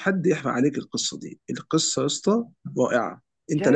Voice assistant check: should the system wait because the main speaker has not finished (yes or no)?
no